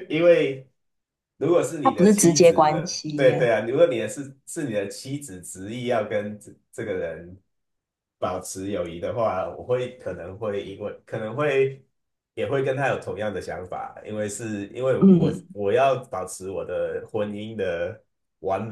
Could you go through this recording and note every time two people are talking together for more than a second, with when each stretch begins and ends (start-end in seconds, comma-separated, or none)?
1.8-3.5